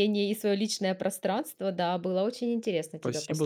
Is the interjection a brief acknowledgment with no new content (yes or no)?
no